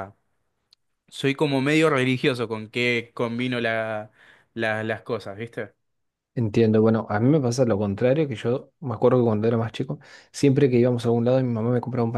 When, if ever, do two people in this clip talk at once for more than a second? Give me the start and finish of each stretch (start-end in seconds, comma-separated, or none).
none